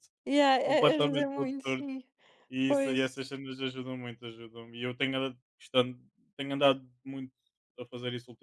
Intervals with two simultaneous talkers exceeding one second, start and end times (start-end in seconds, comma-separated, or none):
0.6-1.9